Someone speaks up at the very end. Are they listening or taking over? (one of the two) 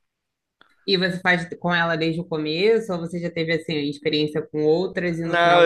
taking over